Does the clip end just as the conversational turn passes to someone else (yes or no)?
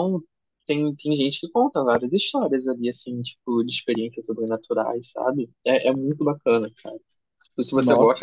no